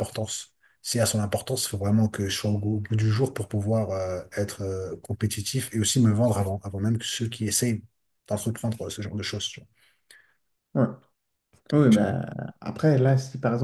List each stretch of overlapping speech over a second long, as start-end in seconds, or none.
none